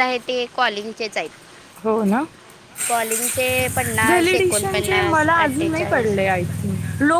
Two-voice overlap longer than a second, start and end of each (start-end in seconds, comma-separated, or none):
4.1-6.2